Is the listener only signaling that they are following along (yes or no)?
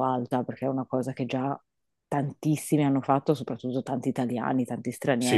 no